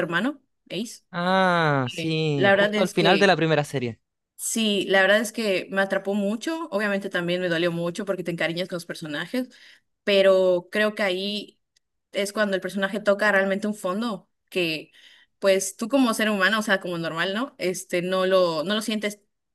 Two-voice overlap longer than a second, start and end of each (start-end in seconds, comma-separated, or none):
1.8-3.4